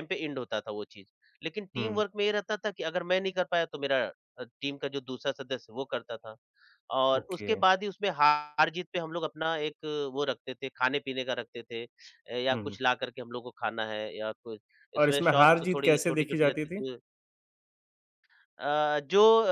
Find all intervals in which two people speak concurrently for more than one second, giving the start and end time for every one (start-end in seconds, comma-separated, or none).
15.0-16.8